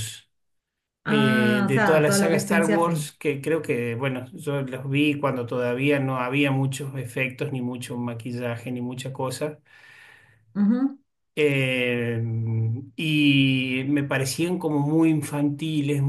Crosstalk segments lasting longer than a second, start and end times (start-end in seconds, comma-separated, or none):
1.1-3.1